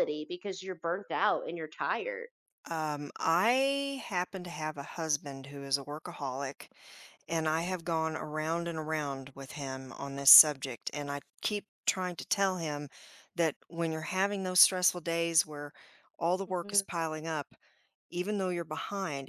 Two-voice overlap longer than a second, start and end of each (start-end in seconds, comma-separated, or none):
none